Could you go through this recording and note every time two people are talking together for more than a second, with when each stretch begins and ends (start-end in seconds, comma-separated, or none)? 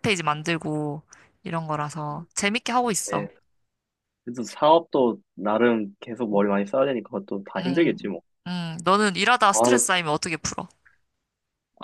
none